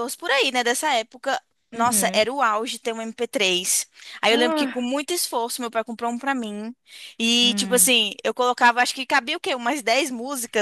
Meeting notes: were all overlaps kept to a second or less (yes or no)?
yes